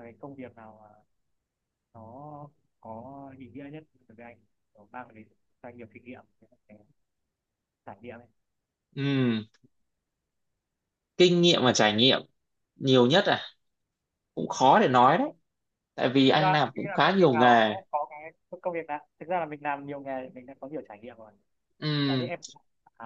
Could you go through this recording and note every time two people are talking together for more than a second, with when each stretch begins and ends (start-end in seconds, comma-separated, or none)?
16.3-17.8